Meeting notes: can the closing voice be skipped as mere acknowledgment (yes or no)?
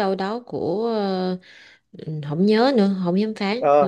no